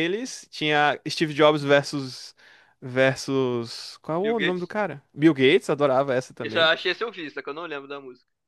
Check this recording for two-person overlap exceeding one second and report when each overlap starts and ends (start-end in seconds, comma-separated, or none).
none